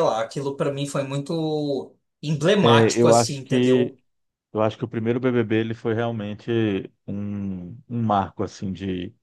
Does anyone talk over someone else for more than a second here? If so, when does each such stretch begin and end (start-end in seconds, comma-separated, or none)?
2.6-3.9